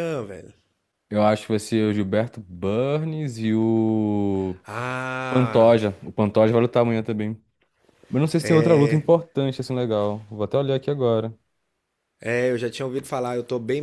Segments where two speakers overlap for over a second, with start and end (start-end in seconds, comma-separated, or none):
none